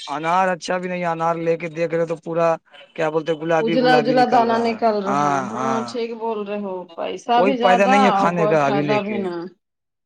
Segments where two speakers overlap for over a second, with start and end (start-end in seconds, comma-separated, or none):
7.4-9.2